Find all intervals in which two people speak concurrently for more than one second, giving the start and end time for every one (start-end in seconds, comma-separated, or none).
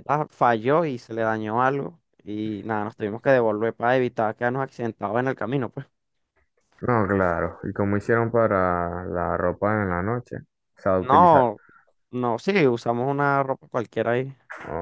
none